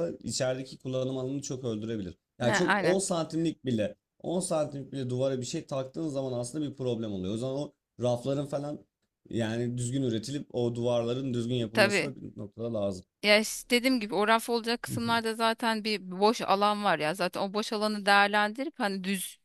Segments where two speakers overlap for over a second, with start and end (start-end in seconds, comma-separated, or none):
none